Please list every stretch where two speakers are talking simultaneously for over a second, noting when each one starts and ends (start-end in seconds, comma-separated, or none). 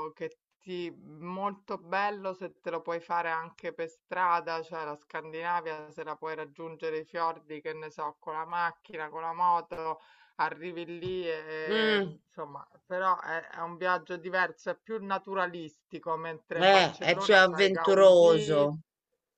16.5-18.7